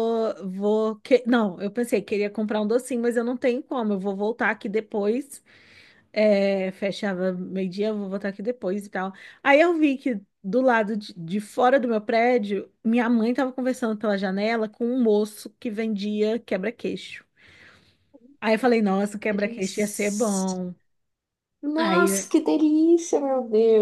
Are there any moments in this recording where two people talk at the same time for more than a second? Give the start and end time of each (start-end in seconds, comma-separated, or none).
19.3-20.6